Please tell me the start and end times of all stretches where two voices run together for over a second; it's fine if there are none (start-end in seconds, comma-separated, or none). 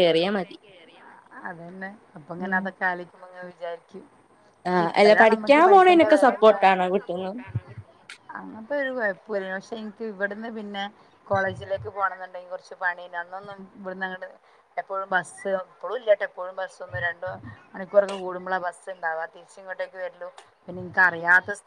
4.8-6.5